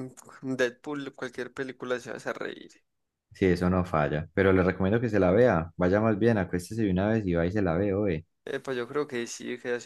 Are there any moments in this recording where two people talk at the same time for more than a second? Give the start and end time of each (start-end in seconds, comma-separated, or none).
none